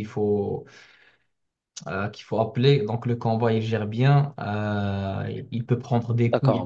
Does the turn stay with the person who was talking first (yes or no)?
no